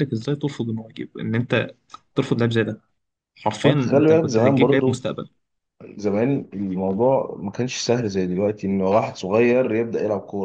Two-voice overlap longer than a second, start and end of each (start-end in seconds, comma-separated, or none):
3.6-5.0